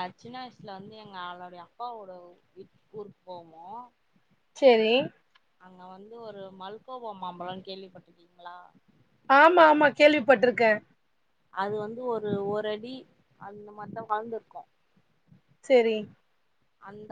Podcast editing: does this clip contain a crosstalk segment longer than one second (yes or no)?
no